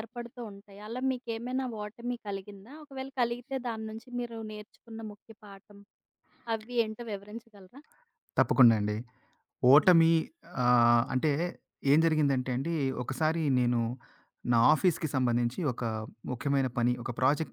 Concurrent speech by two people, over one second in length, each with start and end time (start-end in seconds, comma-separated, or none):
none